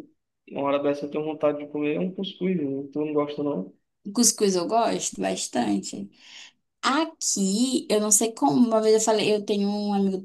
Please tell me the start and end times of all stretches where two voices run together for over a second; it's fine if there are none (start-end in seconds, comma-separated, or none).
none